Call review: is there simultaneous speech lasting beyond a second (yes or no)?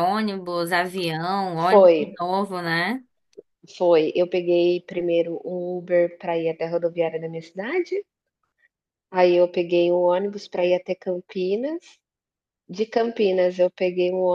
no